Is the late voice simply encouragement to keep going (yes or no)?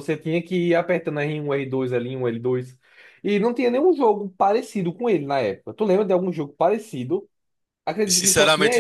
no